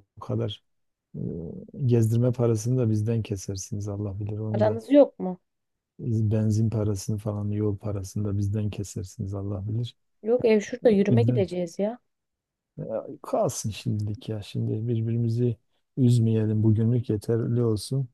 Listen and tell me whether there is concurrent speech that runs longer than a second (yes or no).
no